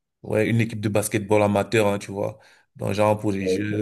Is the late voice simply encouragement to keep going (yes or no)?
yes